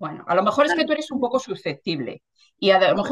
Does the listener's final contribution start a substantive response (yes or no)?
no